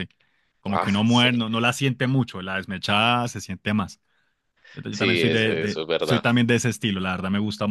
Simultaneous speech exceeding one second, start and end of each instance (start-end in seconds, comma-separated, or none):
4.9-6.2